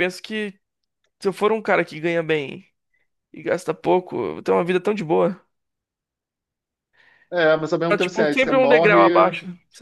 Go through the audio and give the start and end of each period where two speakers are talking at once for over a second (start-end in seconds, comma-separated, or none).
7.9-9.1